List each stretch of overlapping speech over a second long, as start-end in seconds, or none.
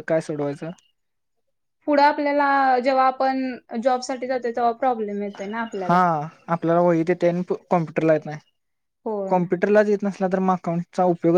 none